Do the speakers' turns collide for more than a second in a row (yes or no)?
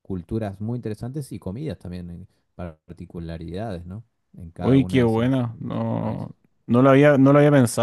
yes